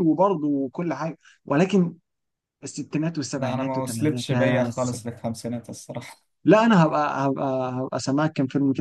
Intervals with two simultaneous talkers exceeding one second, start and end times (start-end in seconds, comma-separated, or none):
3.4-4.7